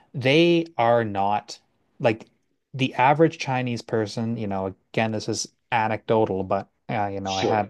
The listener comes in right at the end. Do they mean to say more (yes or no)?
no